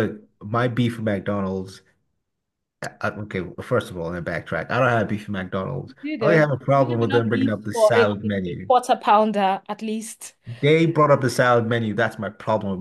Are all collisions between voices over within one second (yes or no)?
no